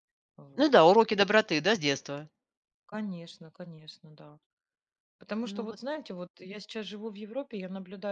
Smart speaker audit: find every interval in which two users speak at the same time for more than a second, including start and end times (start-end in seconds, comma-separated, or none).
none